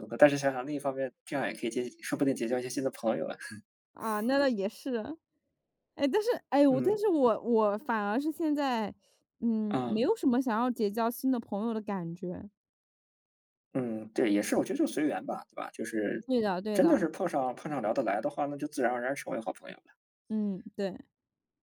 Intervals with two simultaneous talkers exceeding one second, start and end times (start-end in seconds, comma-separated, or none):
none